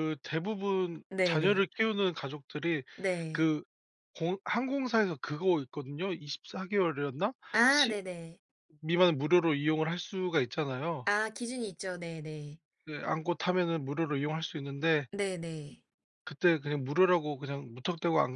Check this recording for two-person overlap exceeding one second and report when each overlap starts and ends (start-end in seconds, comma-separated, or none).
none